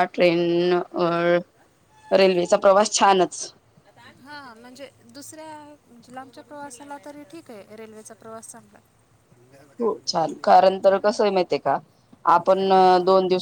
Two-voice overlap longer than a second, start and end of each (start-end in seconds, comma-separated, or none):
none